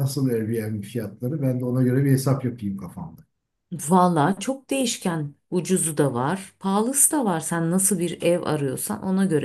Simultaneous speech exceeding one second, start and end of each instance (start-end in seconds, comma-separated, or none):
none